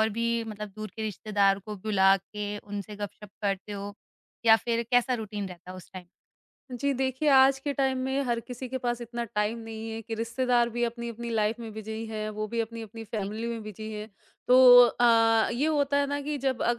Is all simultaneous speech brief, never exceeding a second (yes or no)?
yes